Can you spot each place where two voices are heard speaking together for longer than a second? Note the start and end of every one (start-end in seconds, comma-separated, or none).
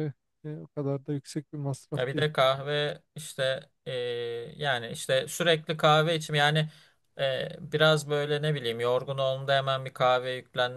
none